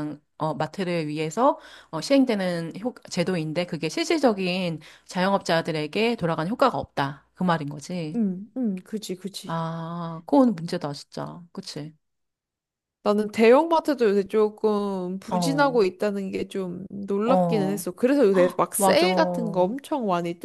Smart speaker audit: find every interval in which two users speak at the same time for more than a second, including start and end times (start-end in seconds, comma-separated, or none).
none